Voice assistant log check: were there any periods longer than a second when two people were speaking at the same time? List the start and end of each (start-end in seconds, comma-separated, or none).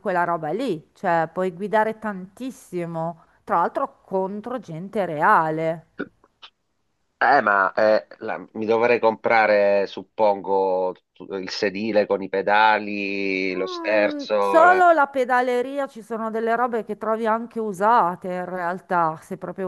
13.5-14.9